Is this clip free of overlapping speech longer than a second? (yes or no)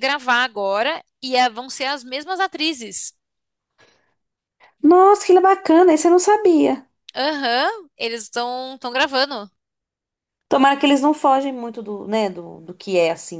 yes